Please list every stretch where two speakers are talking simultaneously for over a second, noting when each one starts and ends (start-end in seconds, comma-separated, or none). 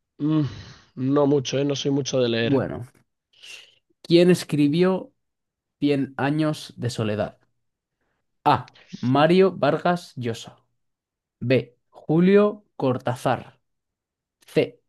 none